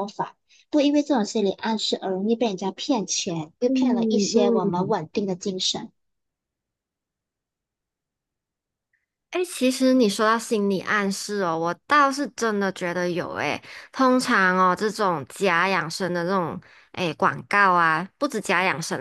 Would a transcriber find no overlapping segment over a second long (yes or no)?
no